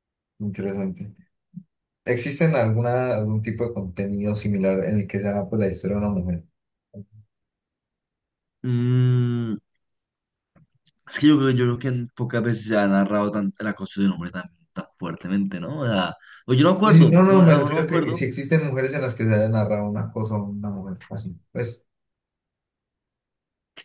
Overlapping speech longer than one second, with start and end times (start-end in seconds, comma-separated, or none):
16.8-18.2